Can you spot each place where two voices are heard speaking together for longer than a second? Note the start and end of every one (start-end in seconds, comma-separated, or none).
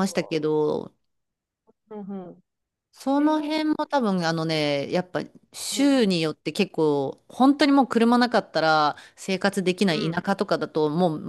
none